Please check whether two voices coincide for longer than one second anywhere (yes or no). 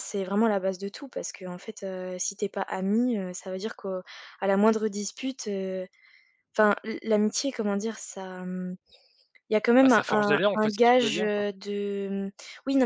yes